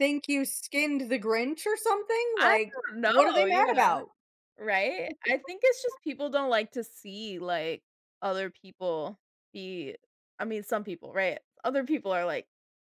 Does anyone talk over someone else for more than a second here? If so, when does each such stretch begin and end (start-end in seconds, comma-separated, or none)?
2.4-4.0